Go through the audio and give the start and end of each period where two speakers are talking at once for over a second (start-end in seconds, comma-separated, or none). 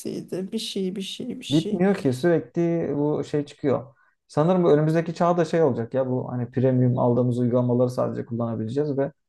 none